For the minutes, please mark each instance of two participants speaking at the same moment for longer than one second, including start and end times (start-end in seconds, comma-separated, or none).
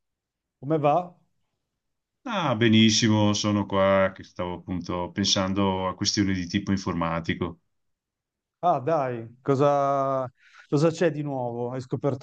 none